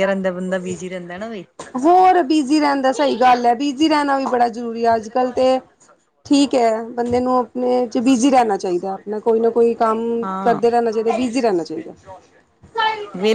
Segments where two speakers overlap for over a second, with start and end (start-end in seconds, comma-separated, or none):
none